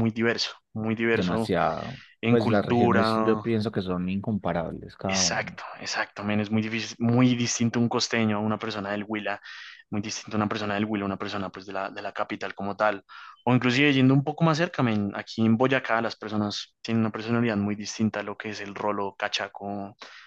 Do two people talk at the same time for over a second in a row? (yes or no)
yes